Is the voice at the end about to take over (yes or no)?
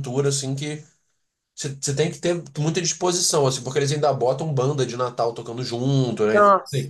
no